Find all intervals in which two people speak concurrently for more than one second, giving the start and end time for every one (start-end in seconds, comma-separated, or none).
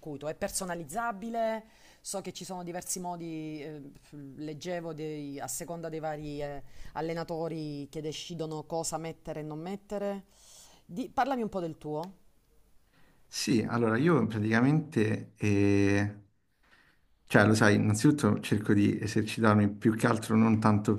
none